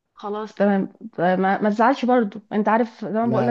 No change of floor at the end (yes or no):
yes